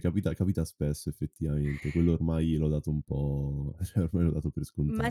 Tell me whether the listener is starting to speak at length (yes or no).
yes